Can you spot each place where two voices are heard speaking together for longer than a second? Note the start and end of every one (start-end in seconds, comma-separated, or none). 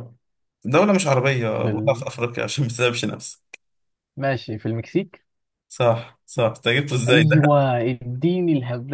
none